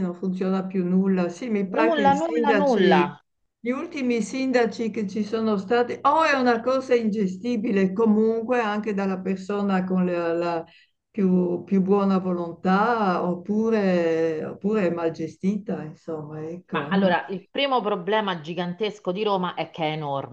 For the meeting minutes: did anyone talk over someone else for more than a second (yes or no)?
yes